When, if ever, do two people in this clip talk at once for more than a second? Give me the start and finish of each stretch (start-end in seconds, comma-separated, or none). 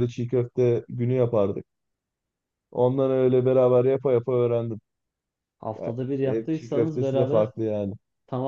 5.8-7.5